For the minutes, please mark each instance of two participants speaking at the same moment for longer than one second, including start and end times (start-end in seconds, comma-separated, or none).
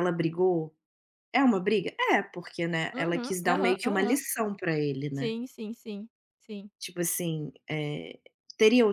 2.9-4.2